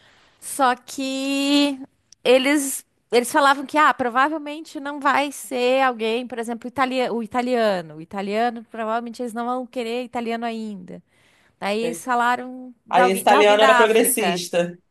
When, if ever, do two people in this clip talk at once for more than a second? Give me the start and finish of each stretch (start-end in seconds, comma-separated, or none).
12.9-14.4